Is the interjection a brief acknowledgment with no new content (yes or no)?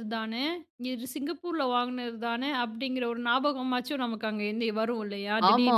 no